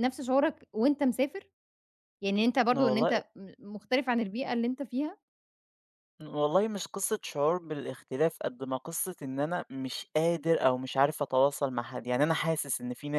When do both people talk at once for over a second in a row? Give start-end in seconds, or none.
none